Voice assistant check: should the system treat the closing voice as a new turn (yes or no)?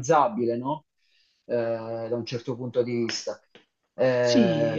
yes